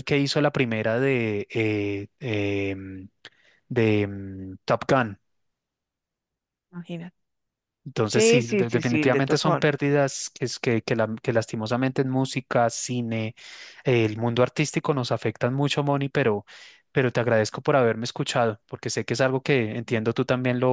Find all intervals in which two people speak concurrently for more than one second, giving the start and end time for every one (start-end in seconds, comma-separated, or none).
8.1-9.7